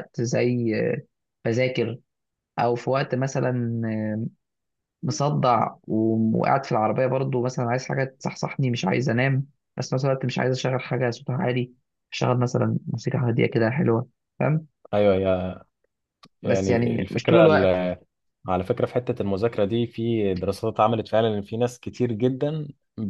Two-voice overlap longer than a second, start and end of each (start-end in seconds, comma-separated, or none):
16.4-17.8